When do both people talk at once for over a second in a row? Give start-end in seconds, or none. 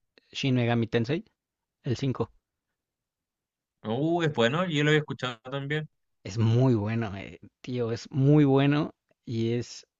none